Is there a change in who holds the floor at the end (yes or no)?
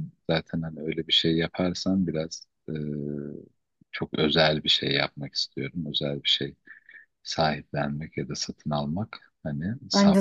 yes